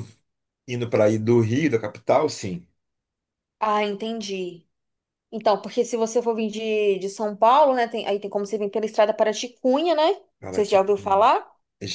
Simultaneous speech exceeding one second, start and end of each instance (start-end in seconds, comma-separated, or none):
none